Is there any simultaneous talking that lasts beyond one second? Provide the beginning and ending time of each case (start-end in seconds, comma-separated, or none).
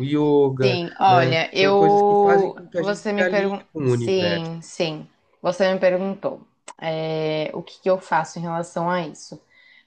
0.6-4.5